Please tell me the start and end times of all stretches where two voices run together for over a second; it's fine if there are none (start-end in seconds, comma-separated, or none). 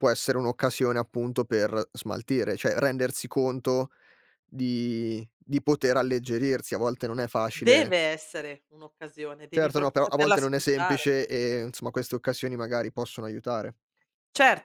9.5-11.1